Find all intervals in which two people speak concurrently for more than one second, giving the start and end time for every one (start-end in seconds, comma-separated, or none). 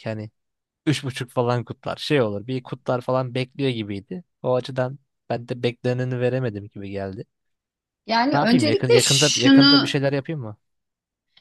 8.3-10.0